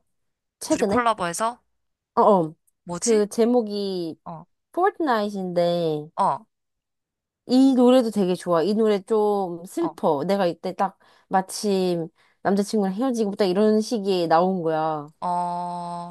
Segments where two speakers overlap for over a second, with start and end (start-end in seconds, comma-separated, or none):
none